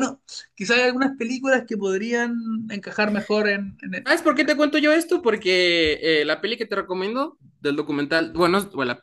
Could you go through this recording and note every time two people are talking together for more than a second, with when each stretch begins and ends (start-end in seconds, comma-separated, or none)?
none